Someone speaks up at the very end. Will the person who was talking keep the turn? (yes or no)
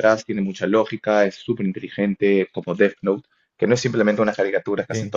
yes